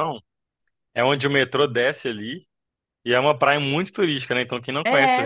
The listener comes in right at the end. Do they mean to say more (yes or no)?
no